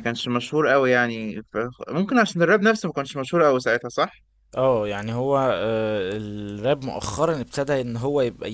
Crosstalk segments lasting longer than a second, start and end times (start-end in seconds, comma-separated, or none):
none